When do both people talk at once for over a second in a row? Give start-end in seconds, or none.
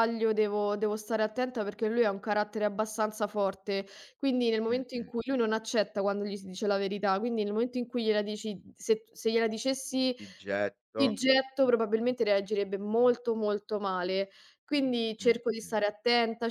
none